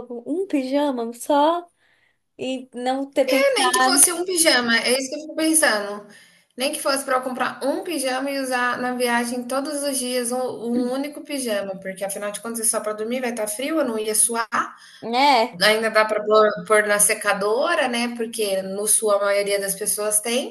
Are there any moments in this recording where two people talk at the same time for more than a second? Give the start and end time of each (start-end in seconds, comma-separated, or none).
none